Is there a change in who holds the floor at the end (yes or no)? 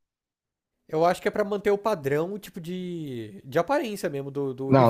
yes